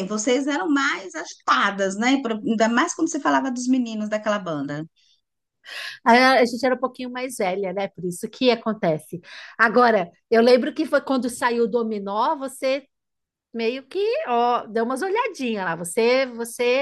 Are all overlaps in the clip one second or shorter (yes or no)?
yes